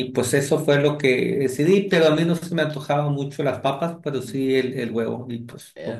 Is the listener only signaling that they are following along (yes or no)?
no